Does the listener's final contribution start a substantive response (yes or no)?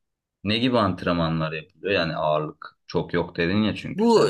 yes